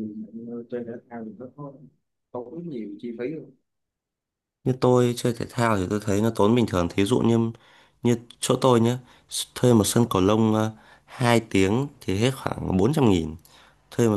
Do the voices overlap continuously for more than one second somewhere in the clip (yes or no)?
no